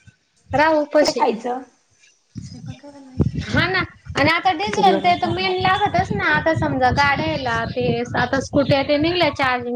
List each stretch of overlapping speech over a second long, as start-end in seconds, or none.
4.6-5.9